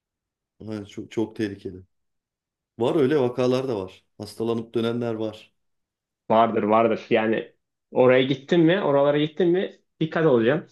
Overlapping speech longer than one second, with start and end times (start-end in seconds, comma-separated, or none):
none